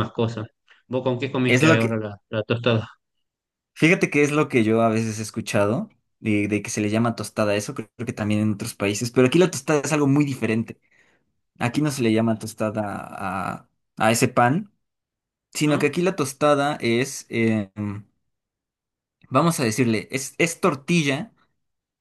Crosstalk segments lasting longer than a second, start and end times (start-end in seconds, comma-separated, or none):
none